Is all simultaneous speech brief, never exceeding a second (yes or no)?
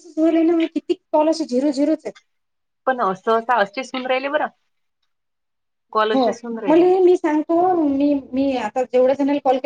yes